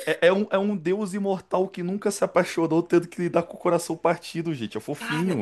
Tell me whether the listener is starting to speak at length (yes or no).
yes